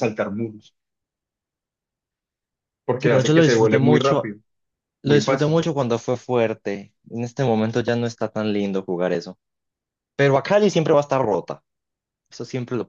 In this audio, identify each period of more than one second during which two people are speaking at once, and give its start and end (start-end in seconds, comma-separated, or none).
3.0-4.3